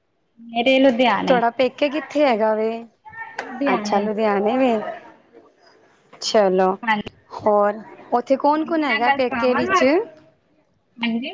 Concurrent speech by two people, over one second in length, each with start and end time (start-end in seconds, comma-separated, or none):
8.6-9.8